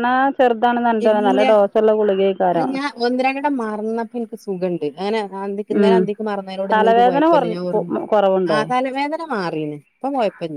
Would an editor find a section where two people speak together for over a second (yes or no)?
yes